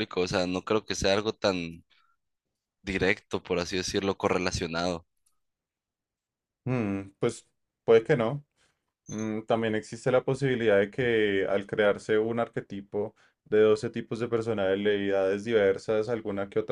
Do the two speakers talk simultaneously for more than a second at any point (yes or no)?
no